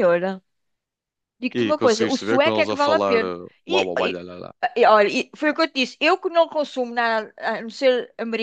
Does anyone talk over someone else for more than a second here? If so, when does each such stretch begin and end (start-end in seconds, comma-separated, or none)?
1.6-4.2